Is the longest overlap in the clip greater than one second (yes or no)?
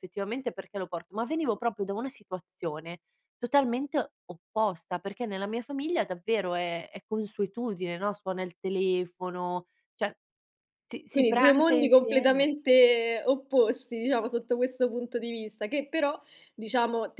yes